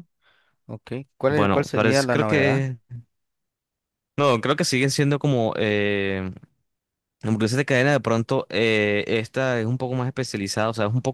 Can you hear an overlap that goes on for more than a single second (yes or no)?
yes